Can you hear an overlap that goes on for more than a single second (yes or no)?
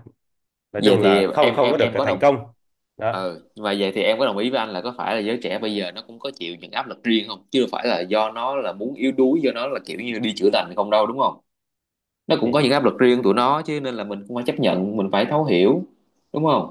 yes